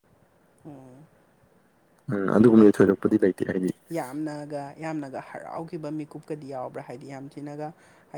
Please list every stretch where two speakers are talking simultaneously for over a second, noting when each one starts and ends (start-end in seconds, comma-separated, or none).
none